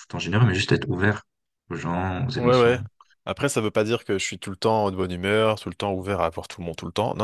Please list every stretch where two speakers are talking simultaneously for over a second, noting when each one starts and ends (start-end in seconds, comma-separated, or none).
none